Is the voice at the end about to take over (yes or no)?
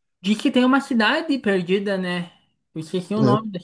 yes